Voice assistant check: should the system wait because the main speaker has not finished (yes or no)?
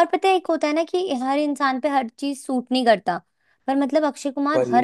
yes